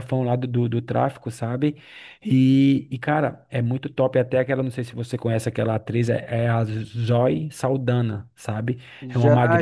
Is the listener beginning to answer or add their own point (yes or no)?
yes